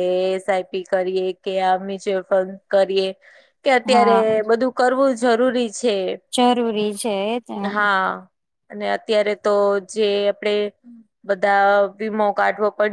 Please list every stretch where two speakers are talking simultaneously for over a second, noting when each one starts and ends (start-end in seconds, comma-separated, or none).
none